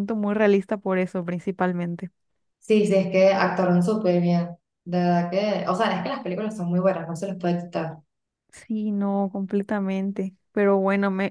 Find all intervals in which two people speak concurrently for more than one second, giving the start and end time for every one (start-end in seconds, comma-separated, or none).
none